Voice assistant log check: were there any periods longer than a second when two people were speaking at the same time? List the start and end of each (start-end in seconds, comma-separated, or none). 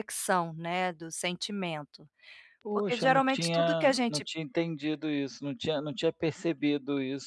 2.7-4.2